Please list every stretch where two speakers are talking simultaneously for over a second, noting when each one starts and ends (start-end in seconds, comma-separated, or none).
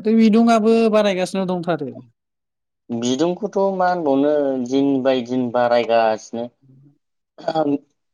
none